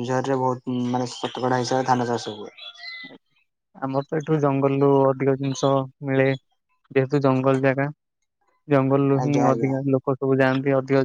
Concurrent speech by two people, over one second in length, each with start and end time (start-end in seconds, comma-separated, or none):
none